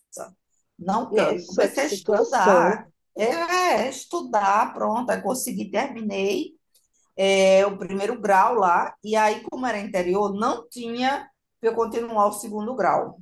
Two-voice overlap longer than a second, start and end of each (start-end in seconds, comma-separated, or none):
1.1-2.8